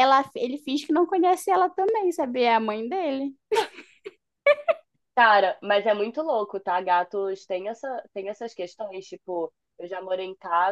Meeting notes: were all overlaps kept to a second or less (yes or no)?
yes